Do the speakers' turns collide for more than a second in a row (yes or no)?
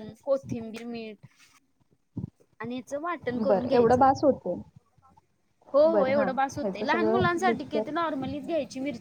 yes